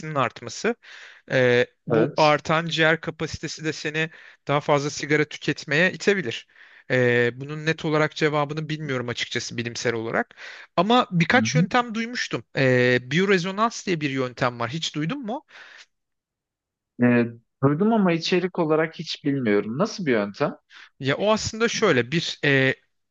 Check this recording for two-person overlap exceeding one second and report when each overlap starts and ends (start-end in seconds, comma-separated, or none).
none